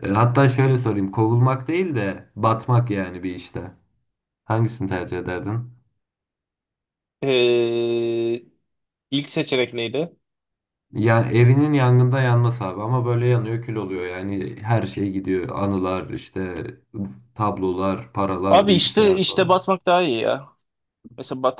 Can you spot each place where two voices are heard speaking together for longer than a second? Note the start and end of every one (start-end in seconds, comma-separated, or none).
18.4-19.7